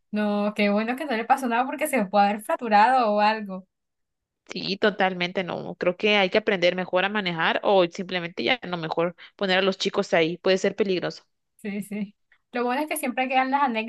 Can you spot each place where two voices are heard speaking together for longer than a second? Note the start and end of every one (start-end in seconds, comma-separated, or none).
none